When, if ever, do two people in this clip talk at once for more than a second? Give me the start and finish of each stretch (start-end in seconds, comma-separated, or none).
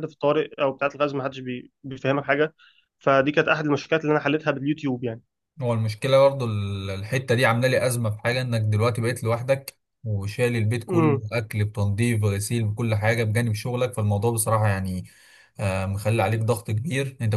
none